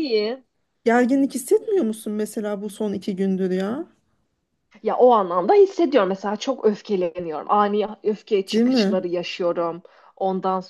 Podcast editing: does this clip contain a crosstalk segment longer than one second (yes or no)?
no